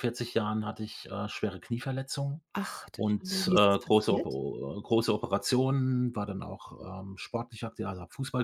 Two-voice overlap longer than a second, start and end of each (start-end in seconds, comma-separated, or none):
2.9-4.4